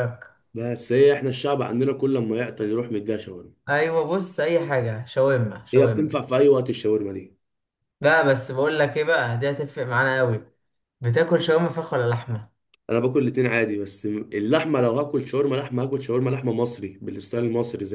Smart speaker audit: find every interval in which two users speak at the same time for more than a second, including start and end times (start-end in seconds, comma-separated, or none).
none